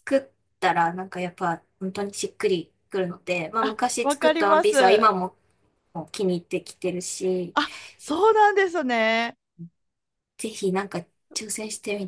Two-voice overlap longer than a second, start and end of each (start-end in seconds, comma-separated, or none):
3.6-5.1